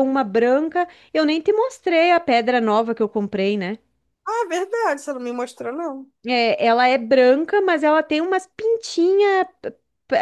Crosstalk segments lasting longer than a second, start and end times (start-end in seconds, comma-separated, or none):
none